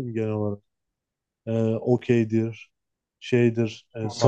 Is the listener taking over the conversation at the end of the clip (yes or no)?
yes